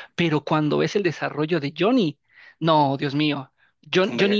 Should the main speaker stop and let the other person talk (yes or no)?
no